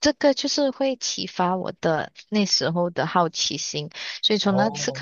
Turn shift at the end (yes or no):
no